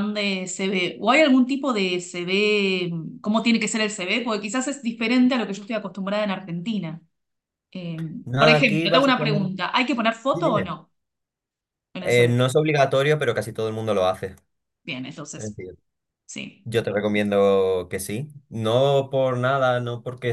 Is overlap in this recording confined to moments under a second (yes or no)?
no